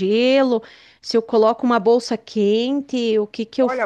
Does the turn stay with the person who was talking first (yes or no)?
no